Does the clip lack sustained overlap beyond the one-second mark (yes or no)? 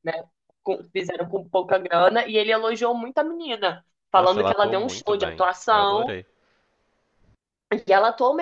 no